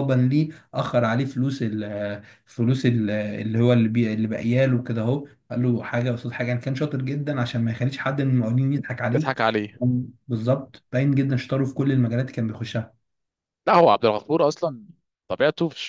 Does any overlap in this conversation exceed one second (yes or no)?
no